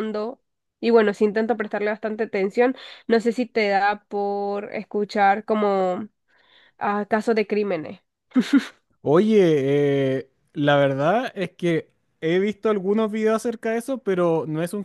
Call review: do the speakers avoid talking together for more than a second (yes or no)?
yes